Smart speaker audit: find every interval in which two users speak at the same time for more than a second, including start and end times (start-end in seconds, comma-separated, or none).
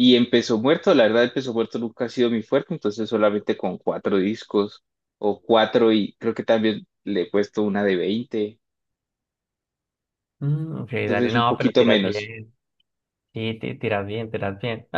11.1-12.3